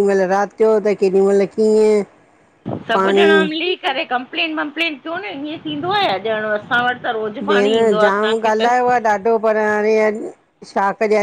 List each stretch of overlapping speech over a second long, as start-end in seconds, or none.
none